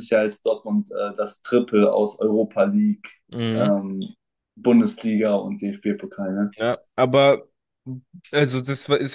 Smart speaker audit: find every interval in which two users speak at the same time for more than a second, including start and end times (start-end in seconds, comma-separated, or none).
none